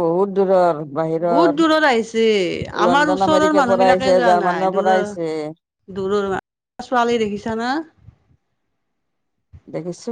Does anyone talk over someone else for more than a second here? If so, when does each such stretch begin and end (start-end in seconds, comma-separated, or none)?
2.9-5.1